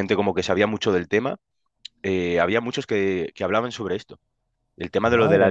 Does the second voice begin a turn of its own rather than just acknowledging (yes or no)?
no